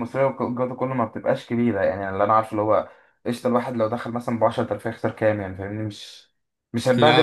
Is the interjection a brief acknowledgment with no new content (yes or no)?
yes